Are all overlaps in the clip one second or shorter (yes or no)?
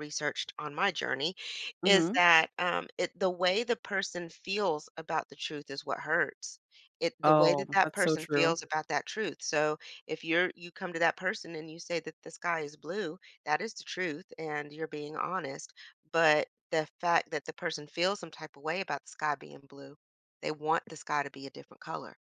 no